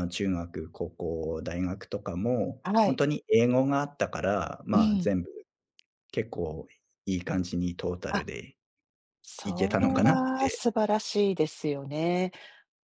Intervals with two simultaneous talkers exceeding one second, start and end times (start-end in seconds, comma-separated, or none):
9.4-10.6